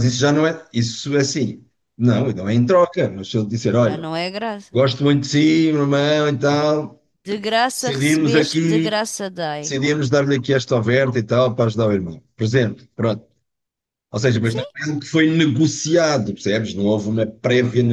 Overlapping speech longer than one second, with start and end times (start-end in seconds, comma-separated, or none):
7.8-9.0